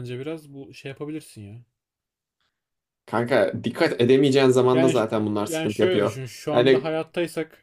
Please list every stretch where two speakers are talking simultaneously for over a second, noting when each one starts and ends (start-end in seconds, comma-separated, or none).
4.7-6.9